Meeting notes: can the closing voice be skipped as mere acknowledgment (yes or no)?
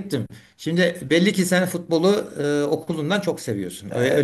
no